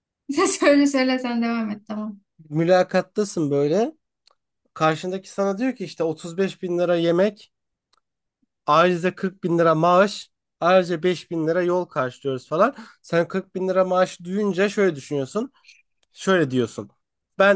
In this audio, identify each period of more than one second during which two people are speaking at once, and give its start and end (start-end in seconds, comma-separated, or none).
none